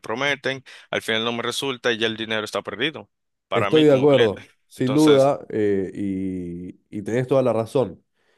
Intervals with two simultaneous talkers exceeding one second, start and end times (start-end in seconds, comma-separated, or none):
3.5-5.3